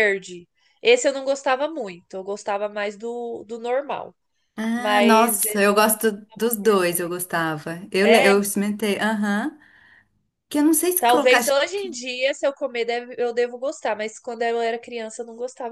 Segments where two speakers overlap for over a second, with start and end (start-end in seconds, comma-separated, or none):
4.7-7.1